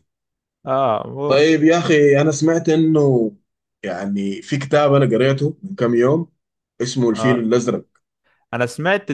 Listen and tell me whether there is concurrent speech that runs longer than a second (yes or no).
no